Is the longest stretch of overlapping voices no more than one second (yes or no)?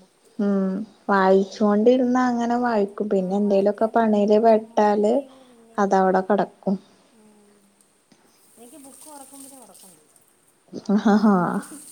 no